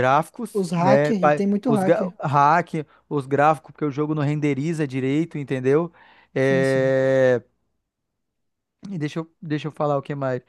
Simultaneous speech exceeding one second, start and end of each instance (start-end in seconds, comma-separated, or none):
0.5-2.1